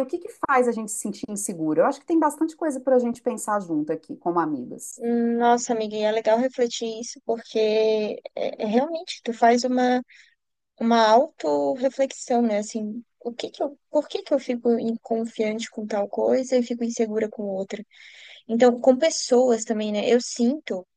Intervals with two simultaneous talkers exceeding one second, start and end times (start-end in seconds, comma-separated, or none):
none